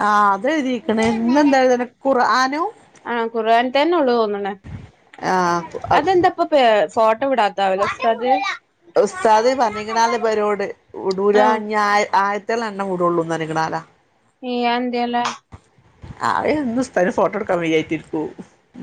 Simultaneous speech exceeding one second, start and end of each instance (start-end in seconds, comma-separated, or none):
9.1-10.6